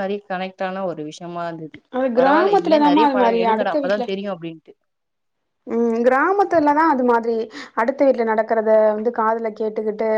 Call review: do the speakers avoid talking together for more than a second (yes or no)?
no